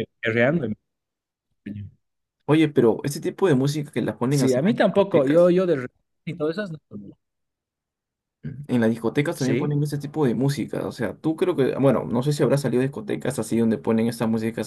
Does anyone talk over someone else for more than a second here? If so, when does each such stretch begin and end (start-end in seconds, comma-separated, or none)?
4.3-5.5